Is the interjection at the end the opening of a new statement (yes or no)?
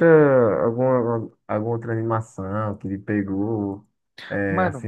no